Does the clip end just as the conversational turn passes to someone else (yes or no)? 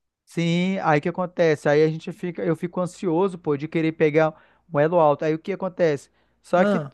no